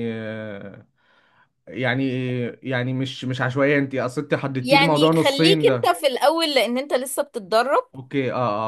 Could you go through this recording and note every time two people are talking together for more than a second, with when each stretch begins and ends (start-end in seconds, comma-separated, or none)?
4.6-6.0